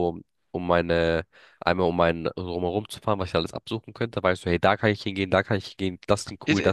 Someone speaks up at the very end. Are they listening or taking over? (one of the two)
taking over